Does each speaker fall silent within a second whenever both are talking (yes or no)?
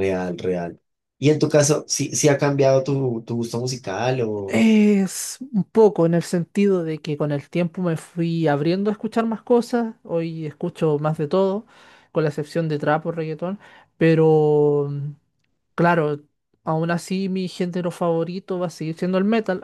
yes